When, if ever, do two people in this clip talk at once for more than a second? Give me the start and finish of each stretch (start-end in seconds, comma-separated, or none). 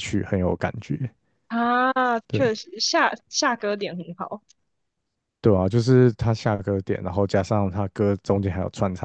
none